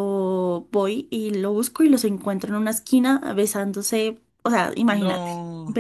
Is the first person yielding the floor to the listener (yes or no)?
no